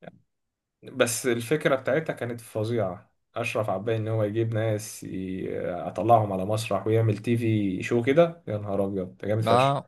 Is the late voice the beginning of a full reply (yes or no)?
yes